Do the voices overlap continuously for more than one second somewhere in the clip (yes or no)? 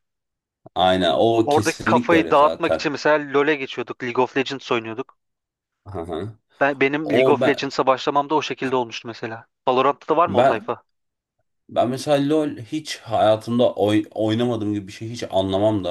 yes